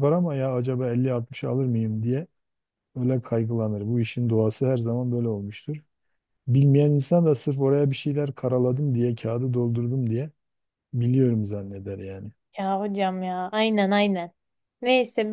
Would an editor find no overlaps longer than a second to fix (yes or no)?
yes